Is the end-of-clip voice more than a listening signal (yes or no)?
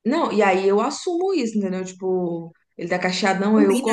no